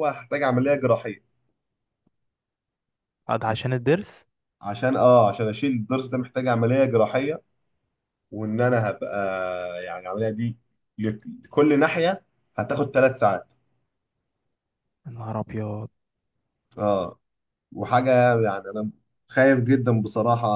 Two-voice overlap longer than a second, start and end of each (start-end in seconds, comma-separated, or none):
none